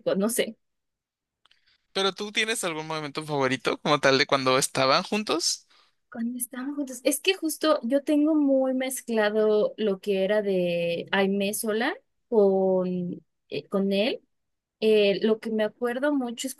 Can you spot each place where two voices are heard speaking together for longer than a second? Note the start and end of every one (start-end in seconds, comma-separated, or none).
none